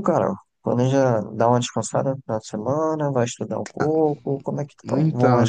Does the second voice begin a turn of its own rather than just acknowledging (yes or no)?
yes